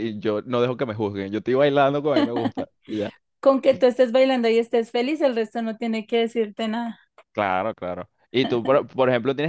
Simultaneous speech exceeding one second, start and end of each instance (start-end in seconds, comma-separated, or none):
none